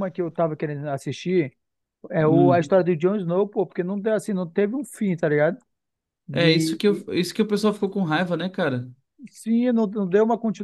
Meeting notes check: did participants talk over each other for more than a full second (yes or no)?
no